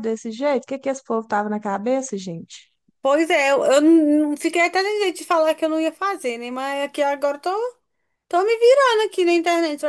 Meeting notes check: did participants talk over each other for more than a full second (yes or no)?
no